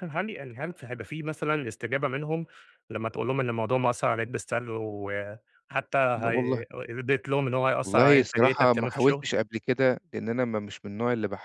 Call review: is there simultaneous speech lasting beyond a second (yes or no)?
yes